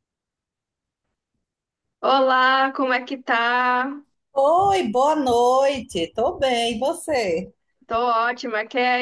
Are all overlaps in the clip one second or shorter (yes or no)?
yes